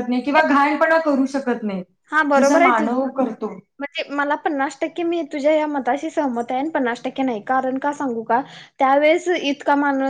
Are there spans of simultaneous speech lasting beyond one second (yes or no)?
no